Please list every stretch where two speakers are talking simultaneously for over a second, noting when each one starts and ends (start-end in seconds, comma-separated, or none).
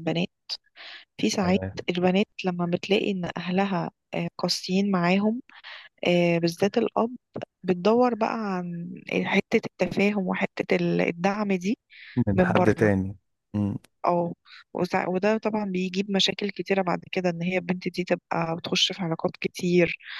none